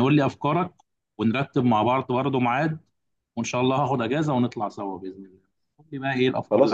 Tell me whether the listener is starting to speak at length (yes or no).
yes